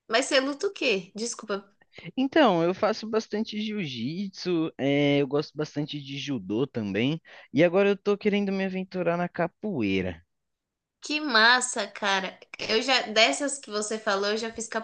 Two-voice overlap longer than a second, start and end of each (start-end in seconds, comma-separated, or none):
none